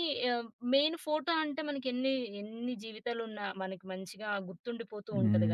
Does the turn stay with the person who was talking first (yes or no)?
no